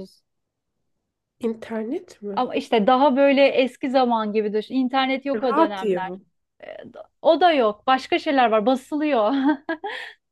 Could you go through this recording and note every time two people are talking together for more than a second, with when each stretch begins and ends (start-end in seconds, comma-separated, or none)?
none